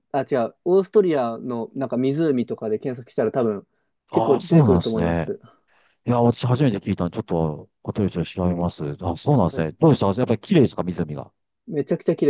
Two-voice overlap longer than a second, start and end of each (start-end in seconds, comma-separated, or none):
4.1-5.3